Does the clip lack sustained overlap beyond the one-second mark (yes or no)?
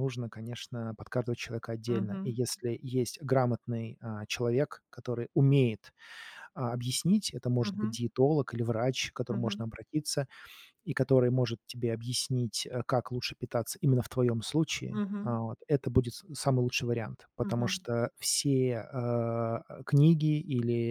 yes